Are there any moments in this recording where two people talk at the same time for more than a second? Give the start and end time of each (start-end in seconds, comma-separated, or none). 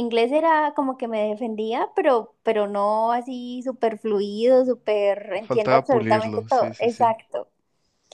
5.4-7.2